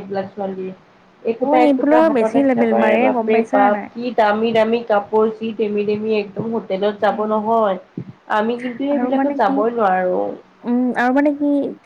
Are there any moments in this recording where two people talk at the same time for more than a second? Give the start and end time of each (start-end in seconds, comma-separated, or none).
1.4-3.9